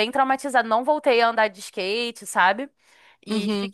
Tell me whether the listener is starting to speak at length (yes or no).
no